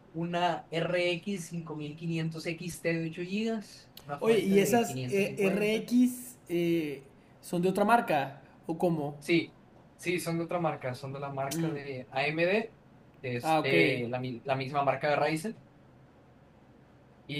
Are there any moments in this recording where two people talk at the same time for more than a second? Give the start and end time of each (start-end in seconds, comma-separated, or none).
4.2-5.8